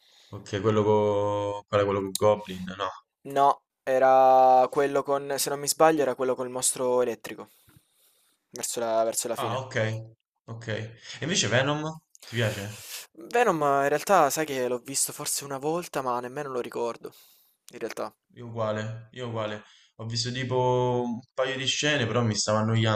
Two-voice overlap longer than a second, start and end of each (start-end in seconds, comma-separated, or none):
none